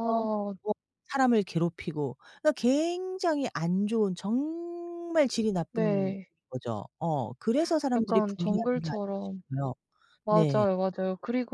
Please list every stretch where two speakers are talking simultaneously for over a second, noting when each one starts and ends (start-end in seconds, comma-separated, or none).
8.0-9.4